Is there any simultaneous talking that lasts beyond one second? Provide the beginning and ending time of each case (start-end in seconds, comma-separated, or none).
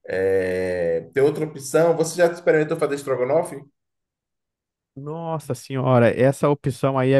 none